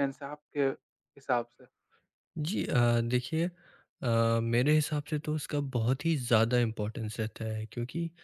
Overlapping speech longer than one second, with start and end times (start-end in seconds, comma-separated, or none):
none